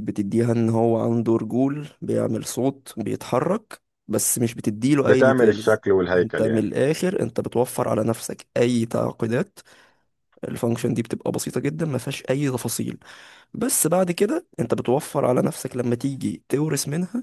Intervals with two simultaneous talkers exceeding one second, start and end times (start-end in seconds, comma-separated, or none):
5.0-6.7